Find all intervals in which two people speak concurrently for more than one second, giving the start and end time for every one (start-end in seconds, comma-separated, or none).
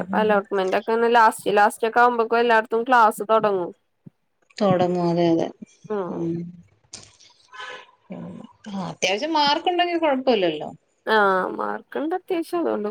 none